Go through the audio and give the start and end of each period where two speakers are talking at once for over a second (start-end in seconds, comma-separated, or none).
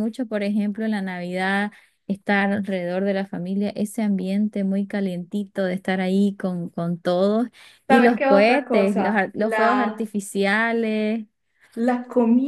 7.9-10.1